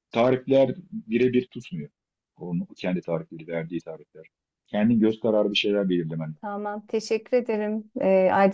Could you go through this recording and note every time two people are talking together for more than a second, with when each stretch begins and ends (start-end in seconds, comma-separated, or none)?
none